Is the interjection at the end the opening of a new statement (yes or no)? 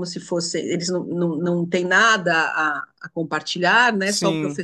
no